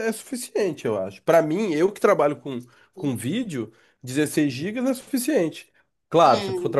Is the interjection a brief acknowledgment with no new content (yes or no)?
yes